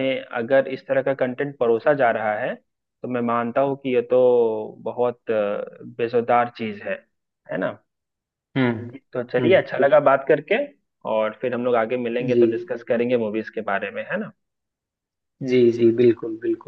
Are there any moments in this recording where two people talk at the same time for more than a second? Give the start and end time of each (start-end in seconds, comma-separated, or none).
none